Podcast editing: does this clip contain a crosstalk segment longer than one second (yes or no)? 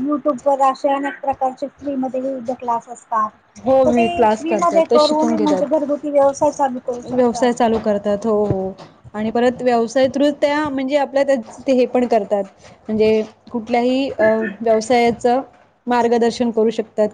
yes